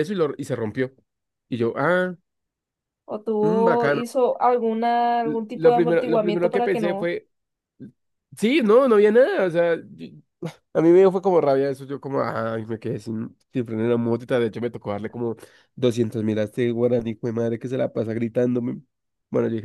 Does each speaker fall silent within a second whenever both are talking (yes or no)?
no